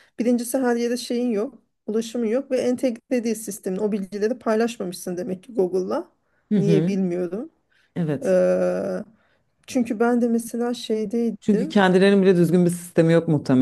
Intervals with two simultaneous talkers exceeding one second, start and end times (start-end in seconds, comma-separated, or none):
none